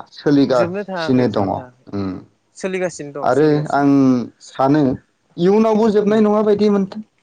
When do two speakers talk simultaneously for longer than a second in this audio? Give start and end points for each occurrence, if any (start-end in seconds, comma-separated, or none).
0.6-1.9